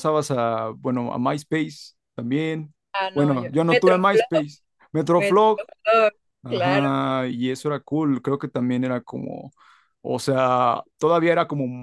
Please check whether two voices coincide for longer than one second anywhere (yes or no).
yes